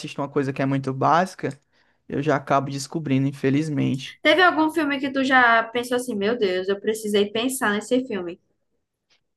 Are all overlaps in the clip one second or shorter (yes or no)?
yes